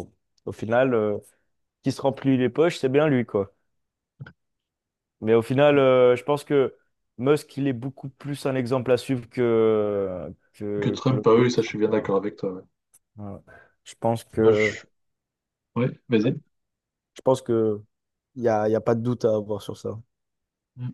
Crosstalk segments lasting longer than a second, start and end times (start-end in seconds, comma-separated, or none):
10.8-12.1